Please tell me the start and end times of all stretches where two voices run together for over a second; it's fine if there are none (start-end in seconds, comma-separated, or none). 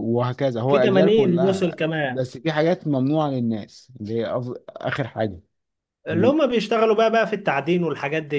0.7-2.2